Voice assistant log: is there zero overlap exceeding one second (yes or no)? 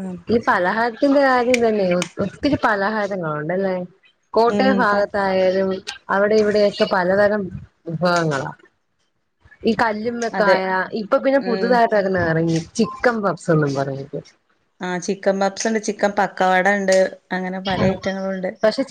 yes